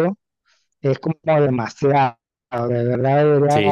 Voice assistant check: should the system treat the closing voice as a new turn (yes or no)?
yes